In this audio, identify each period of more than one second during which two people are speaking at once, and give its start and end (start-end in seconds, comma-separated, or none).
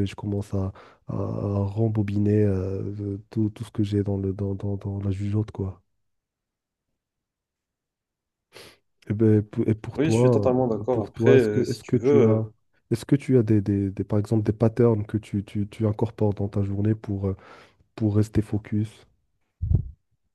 9.9-12.4